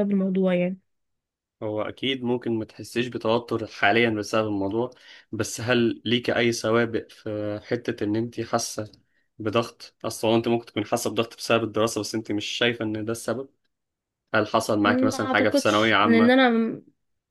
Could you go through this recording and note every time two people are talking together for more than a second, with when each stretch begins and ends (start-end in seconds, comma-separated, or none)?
14.8-16.4